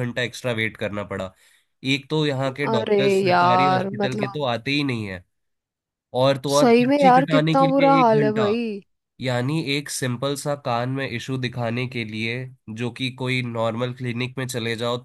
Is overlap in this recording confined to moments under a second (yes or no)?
no